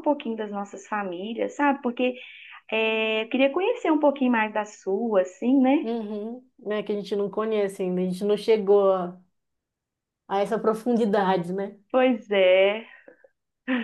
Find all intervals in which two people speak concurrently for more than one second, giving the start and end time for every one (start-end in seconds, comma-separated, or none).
none